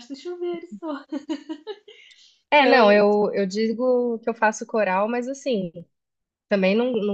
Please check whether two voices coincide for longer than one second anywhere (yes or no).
no